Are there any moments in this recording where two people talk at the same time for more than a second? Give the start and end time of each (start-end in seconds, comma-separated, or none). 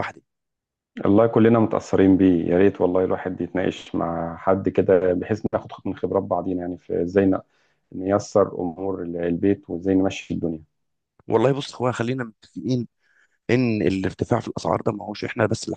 none